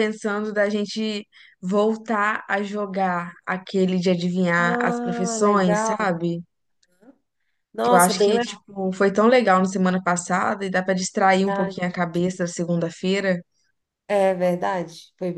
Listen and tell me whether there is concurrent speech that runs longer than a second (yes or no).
yes